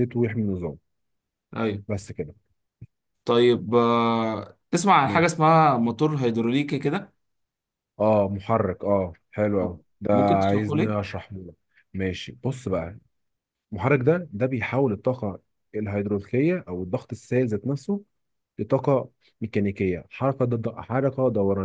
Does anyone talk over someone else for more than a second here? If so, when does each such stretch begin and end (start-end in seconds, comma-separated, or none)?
9.6-11.0